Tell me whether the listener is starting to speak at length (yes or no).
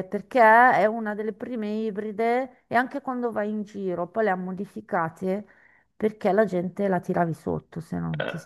yes